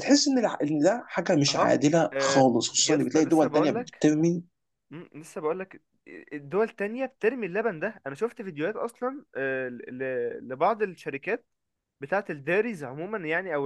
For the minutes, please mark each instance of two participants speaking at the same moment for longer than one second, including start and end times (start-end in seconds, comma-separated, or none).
1.5-4.1